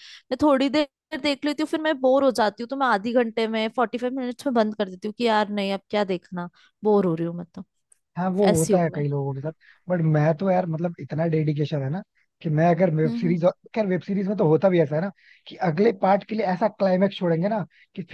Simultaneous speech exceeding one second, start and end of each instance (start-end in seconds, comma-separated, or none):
none